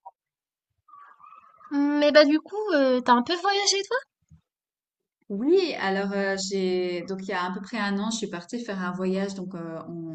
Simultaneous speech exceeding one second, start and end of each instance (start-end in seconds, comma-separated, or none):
none